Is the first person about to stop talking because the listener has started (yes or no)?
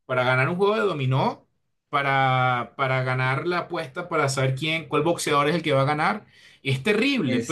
no